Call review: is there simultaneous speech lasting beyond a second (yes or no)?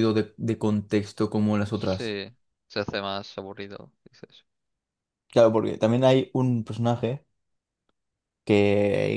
no